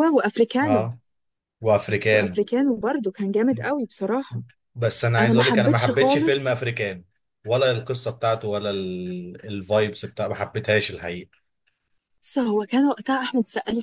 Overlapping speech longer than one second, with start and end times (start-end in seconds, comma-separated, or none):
5.2-6.6